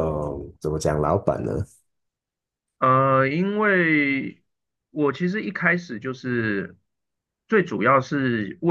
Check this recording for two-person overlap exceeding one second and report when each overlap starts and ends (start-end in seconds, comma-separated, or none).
none